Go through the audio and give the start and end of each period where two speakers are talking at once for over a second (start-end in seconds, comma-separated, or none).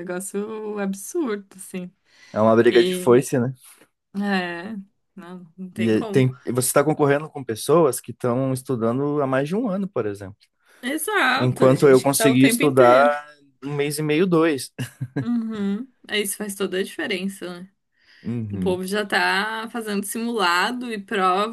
11.4-13.0